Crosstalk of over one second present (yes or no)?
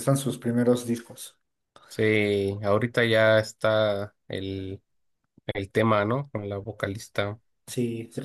no